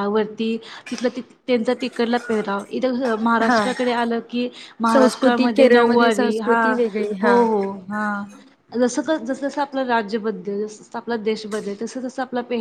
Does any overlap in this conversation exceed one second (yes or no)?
yes